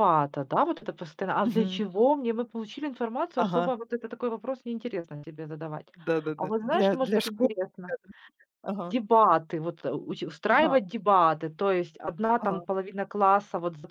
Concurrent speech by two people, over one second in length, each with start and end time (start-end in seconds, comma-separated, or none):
6.4-7.9